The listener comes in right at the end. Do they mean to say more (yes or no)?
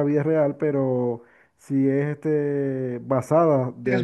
no